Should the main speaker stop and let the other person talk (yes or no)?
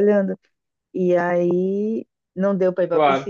no